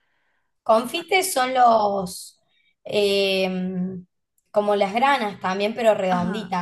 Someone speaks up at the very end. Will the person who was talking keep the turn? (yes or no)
no